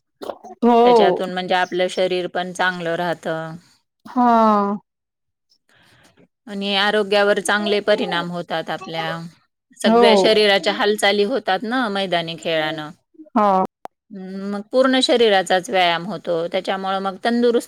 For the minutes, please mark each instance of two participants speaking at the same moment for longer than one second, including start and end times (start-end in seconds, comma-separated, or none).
none